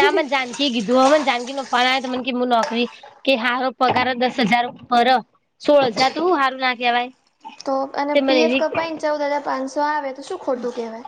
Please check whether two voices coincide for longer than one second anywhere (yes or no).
no